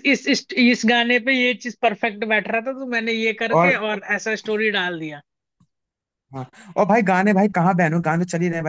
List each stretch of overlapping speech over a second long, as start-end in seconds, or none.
none